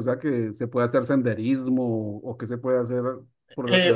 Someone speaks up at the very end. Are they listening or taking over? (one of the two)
taking over